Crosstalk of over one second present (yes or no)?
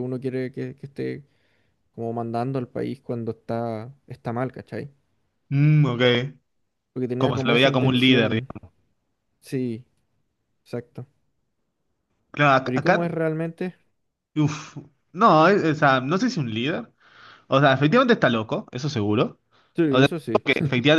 yes